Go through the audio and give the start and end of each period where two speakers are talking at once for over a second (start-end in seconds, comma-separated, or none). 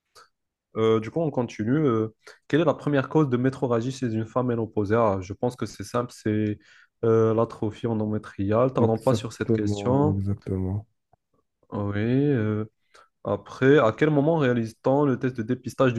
8.8-10.2